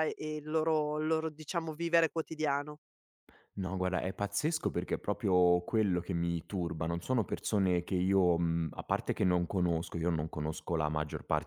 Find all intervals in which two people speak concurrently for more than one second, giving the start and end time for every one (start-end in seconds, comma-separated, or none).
none